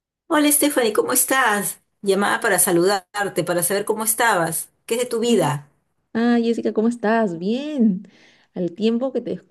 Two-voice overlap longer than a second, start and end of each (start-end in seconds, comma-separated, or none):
none